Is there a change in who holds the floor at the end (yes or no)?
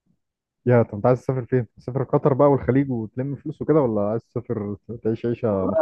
yes